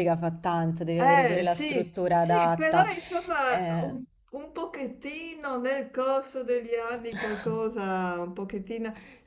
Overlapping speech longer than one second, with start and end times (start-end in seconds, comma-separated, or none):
1.0-2.9